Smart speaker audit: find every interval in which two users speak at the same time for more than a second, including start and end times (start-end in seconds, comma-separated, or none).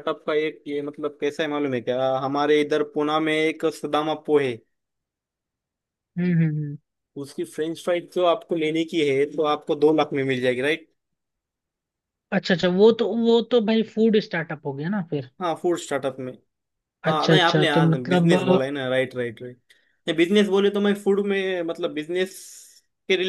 17.1-18.6